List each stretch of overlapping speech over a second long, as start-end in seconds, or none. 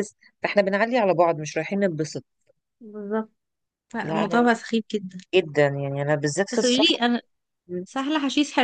none